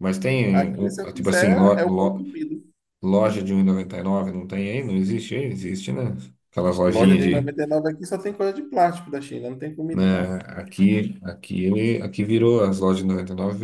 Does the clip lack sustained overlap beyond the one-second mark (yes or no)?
no